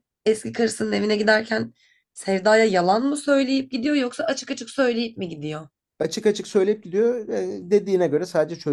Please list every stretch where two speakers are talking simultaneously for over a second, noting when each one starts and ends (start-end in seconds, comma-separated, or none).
none